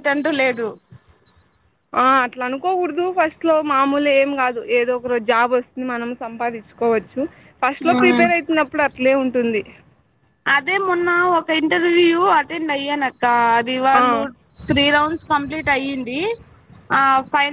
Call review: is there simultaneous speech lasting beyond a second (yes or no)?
no